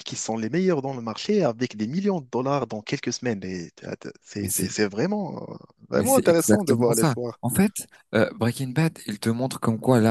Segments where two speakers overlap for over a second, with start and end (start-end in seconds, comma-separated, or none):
5.9-7.4